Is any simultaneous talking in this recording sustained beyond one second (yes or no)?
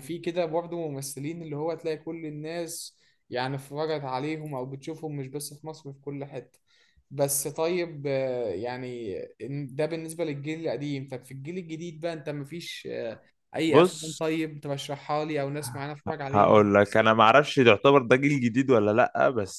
no